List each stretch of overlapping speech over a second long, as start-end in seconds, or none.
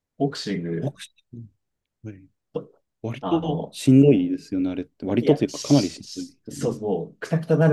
5.2-6.7